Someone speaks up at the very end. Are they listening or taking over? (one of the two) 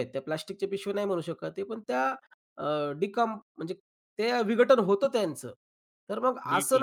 listening